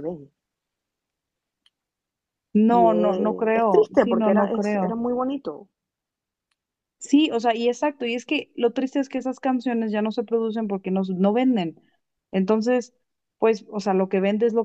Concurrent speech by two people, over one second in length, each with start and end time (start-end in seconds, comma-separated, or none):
2.7-5.0